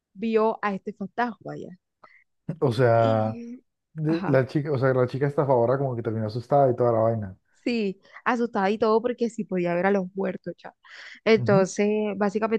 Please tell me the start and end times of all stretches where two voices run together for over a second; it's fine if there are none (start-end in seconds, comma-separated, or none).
none